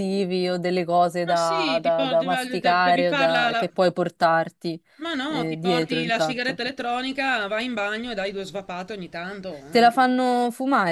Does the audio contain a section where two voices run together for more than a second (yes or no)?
yes